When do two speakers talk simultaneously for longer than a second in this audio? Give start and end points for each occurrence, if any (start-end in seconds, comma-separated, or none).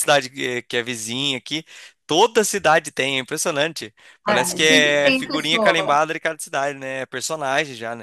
4.2-6.0